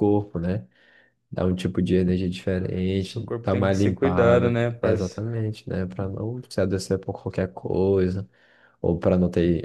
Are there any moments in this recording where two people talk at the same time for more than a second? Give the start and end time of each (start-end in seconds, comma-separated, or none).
3.0-5.2